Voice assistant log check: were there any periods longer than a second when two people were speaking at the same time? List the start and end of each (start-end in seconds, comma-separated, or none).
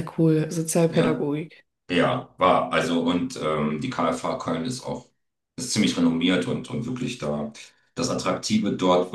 none